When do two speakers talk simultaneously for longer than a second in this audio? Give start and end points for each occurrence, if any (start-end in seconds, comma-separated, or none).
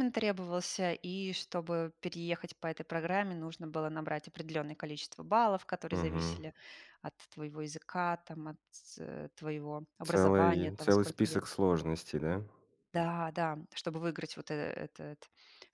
10.0-11.4